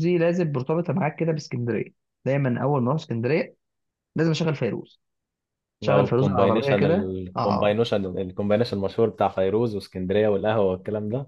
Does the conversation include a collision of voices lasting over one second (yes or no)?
yes